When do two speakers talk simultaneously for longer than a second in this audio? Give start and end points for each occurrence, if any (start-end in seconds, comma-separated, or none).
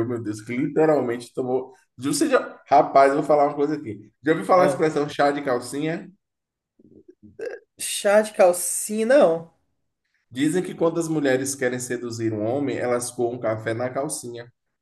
none